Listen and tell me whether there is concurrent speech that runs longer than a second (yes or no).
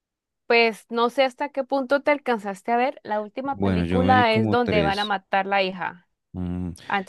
yes